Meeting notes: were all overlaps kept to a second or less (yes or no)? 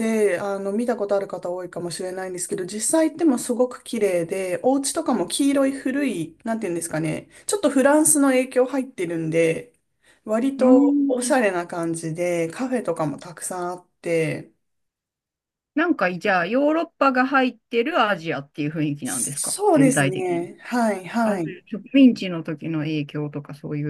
no